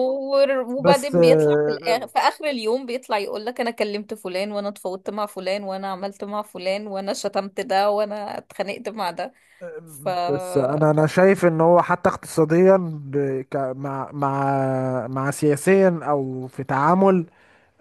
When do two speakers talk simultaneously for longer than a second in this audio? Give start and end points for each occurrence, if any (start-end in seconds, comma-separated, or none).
0.8-2.0